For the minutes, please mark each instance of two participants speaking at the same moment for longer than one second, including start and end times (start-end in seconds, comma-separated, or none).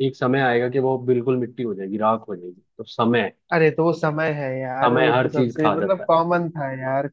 4.8-6.1